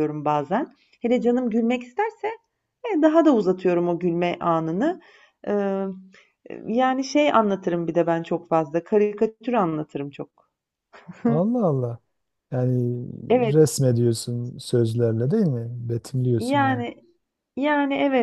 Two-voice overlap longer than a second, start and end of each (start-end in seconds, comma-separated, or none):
none